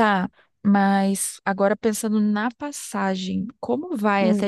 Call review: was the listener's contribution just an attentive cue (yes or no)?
yes